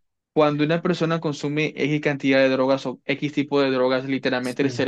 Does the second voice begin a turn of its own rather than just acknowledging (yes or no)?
no